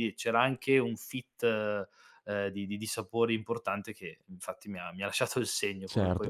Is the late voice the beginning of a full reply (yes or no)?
yes